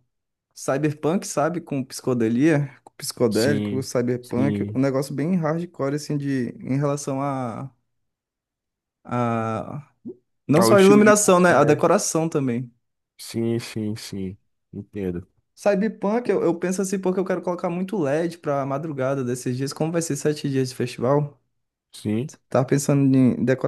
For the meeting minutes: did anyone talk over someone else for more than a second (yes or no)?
yes